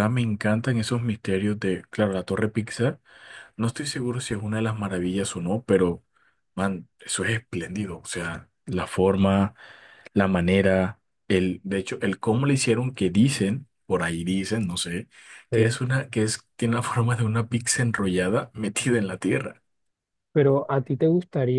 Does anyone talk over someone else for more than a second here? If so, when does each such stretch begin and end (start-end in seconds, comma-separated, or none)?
none